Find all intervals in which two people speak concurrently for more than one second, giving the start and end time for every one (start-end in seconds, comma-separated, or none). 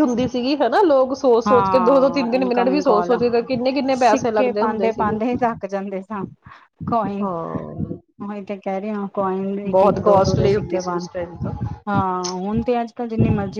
1.5-3.1, 3.9-5.2, 9.7-11.1